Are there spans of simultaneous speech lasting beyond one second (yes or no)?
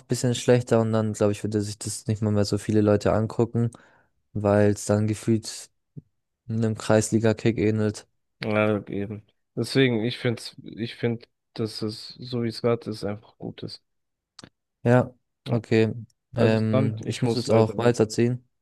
yes